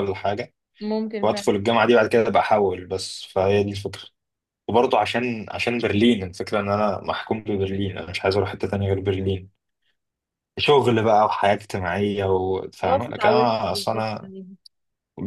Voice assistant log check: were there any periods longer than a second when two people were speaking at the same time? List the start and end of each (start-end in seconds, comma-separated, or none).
12.8-14.1